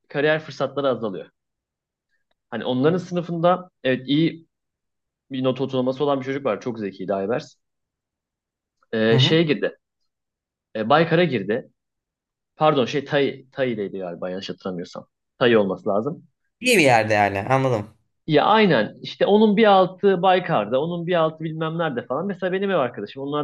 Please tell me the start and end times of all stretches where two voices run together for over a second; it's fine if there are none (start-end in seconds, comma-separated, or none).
none